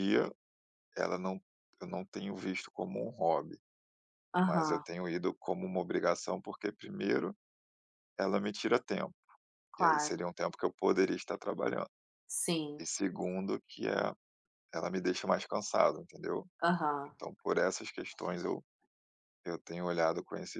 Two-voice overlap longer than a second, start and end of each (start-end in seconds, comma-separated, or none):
none